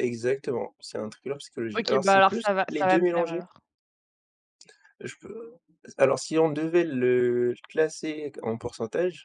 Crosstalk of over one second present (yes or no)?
yes